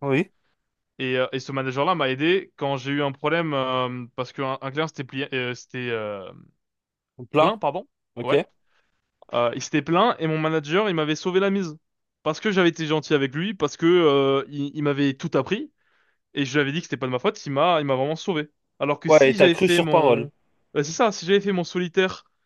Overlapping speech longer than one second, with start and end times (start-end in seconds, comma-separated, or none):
19.1-20.3